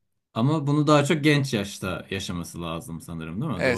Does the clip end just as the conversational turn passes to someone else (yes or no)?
yes